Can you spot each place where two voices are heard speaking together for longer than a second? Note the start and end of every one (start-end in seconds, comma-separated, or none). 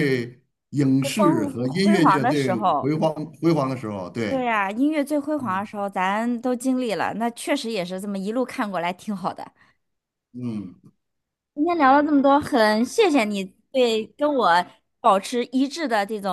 1.0-2.9